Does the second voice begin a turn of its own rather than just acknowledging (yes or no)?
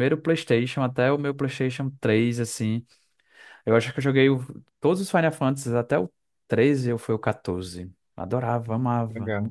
yes